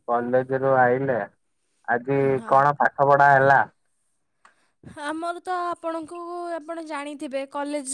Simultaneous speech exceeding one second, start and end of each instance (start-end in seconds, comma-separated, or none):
none